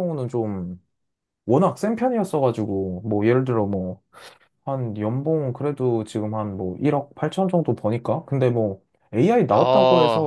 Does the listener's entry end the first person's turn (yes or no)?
no